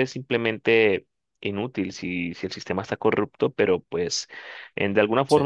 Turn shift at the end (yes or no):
no